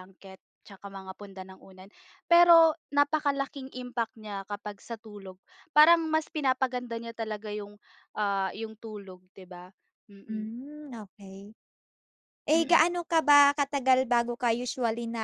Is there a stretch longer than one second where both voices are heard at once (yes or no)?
no